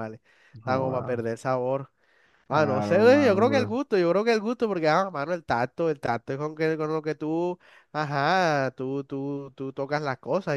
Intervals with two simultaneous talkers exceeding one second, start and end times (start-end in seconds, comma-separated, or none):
2.5-3.8